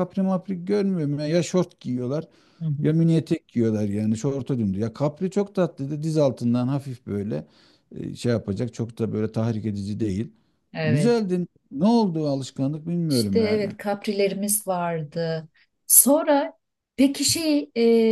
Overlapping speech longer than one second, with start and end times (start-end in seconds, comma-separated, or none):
none